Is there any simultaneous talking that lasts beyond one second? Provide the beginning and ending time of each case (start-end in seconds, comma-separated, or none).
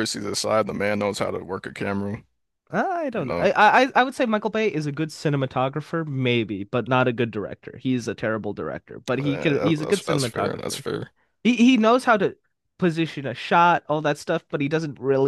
9.2-10.8